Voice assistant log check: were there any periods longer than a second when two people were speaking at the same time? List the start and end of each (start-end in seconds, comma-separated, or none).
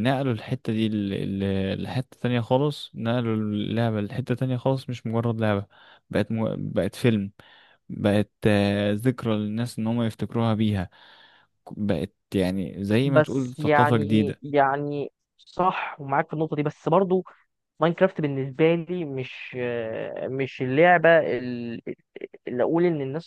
13.0-14.4